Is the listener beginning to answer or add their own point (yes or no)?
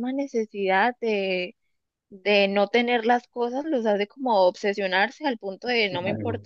no